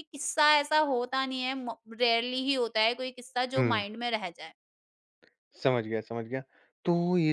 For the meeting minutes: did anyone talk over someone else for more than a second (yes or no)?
no